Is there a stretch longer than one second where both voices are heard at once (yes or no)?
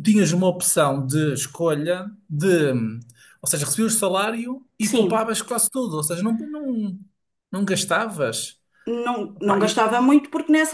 no